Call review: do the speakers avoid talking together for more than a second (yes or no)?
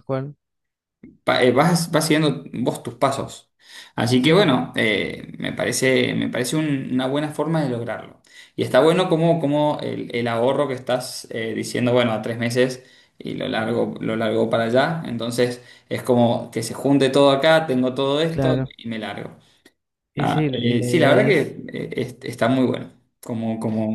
no